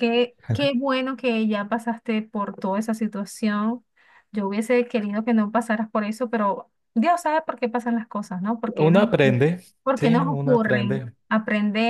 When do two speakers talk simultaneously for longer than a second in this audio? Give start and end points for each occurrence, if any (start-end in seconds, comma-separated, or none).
9.8-11.1